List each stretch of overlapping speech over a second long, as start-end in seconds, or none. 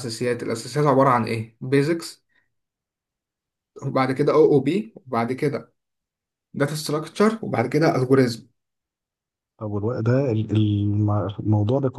none